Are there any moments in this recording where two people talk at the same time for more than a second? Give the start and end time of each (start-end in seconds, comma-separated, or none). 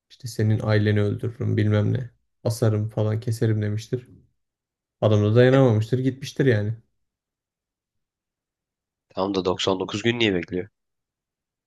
none